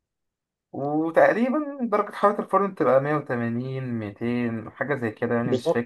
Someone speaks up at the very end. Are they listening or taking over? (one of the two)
taking over